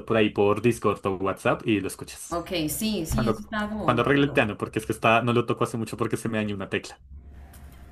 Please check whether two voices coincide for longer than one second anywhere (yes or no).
yes